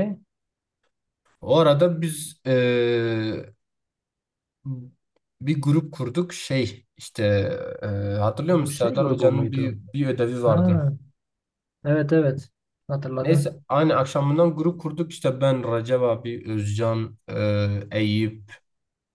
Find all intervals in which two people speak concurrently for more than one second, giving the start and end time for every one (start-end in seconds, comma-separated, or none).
8.5-9.8